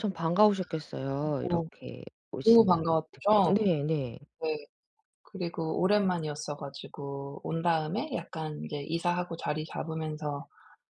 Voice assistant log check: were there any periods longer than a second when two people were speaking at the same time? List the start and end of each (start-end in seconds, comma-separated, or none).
2.4-3.7